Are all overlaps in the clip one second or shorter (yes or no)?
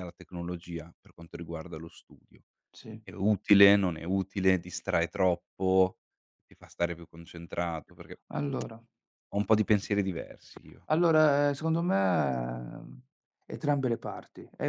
yes